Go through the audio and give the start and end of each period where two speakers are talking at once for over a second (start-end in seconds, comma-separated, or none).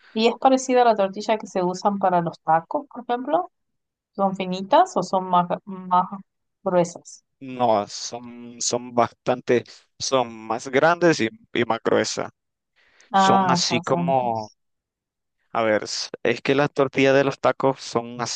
13.1-14.5